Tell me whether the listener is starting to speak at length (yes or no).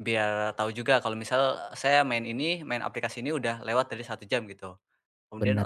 no